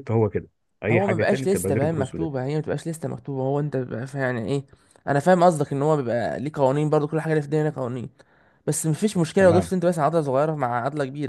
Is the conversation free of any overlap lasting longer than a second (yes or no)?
no